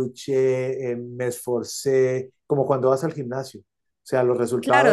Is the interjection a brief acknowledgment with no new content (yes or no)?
no